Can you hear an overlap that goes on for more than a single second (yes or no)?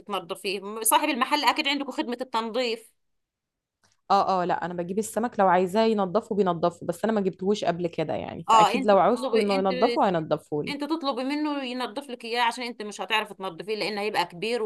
yes